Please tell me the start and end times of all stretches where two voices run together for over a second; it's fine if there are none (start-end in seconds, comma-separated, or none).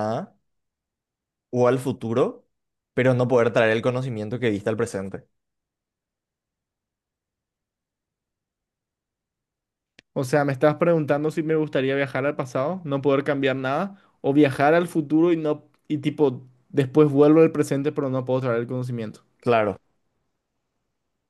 none